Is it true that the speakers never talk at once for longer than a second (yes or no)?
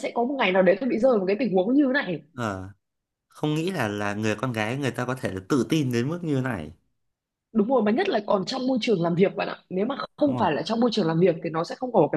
yes